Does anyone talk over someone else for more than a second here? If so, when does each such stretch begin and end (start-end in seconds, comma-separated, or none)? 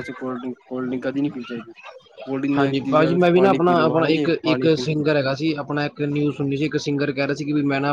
2.6-4.7